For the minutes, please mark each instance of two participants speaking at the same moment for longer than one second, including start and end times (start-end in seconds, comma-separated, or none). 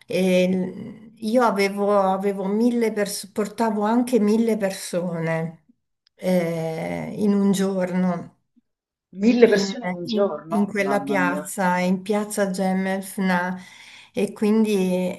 9.4-11.5